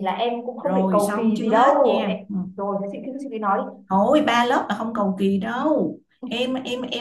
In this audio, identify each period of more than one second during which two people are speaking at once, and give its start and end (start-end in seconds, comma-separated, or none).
0.6-2.4